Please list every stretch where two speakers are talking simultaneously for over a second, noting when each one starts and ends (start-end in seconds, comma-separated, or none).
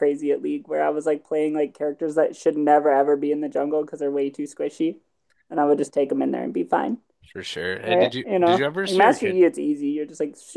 7.8-9.4